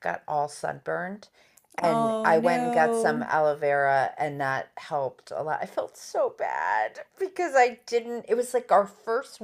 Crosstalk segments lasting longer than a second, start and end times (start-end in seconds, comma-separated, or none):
1.8-3.3